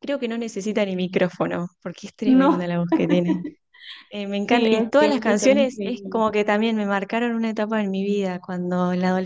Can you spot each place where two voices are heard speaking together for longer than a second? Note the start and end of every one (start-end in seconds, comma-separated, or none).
4.5-6.2